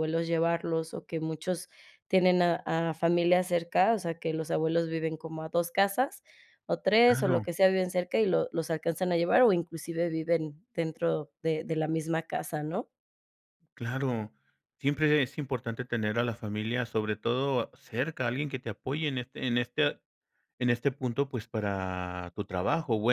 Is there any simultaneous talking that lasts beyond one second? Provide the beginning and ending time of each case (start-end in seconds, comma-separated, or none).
none